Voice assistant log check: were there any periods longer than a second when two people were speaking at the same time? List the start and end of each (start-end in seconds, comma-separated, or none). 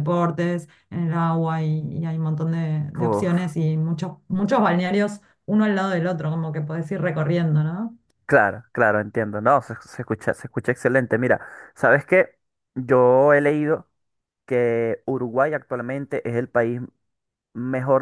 none